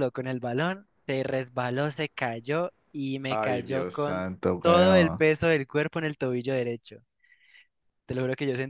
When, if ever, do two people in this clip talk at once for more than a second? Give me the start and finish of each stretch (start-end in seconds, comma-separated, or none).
3.3-5.2